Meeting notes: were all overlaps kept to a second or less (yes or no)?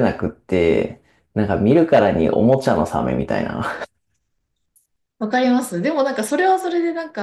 yes